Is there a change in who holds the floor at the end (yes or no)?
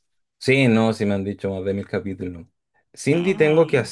no